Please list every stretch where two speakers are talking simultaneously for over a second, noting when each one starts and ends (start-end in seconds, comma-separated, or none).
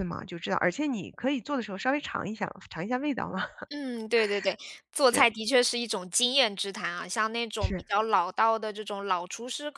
none